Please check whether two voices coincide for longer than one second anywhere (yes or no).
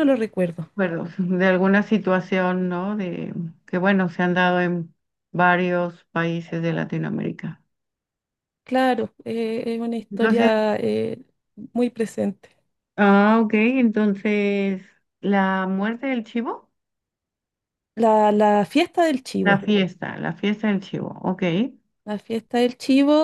no